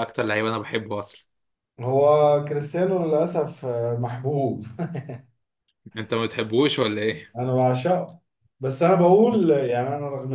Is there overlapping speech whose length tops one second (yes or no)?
no